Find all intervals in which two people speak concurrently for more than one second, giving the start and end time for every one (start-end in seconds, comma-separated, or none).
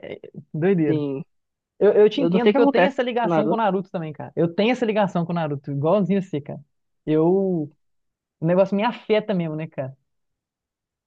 2.1-3.6